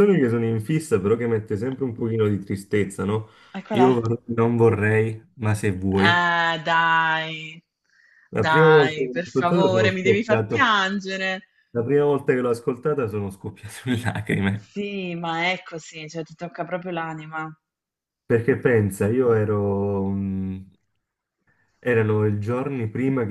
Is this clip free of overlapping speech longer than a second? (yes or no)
no